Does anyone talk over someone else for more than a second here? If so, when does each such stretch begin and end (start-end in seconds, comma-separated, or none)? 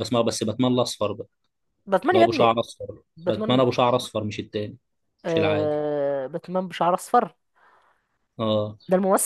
none